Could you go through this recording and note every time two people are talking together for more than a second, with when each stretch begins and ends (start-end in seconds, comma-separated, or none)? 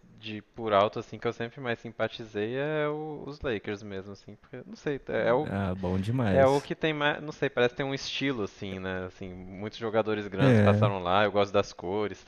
none